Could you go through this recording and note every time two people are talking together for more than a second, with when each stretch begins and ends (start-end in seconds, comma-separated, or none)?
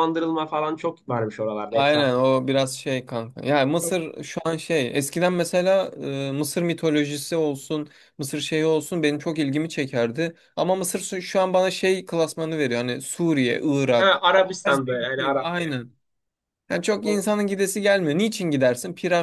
13.9-15.8